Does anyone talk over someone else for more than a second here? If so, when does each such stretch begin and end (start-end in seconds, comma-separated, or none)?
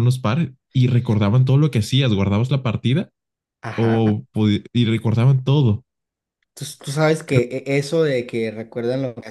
none